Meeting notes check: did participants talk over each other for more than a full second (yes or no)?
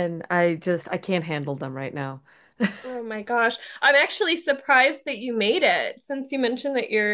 no